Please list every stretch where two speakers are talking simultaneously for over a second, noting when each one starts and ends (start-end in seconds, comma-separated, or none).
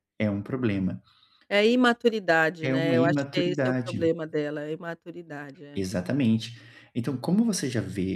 2.6-4.1